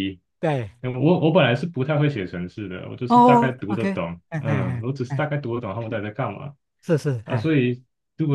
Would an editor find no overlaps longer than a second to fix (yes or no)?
no